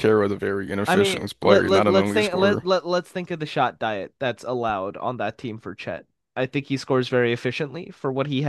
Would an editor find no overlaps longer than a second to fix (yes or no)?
no